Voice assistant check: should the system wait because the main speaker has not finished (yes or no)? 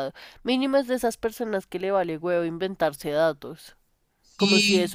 yes